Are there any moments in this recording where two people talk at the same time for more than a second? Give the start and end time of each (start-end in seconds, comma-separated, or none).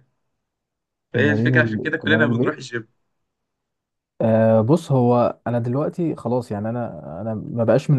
1.1-2.6